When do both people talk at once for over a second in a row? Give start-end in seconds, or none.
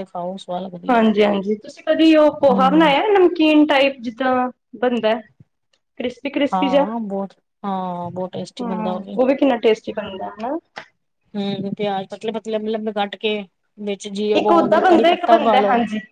none